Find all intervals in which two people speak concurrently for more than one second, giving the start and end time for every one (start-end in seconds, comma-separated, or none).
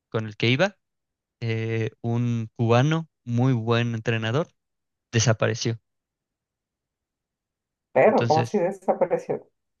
none